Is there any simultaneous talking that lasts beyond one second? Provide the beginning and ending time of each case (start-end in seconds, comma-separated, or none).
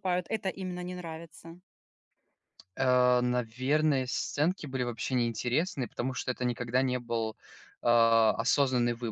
none